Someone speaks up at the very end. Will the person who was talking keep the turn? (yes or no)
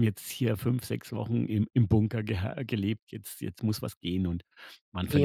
no